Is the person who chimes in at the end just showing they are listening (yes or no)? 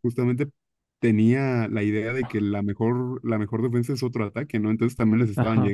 no